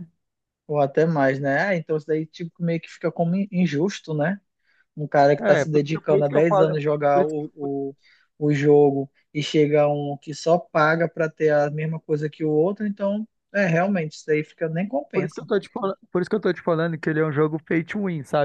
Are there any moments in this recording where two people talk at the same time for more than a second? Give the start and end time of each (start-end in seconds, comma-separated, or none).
5.4-7.7